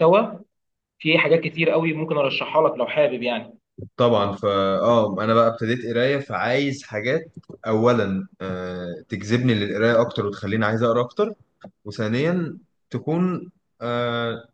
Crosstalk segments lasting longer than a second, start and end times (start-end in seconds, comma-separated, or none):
none